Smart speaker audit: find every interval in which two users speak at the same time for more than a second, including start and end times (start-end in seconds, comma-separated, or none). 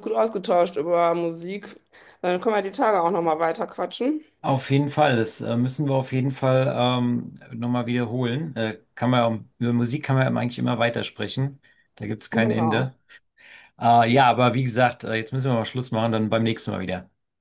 none